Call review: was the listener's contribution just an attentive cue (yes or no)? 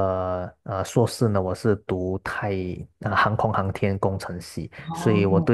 yes